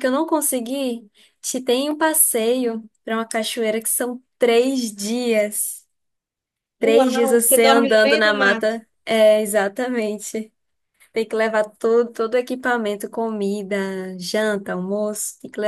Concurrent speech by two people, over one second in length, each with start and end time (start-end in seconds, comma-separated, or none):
6.8-8.8